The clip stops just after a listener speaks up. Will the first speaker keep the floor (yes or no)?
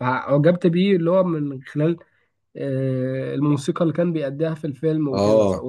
no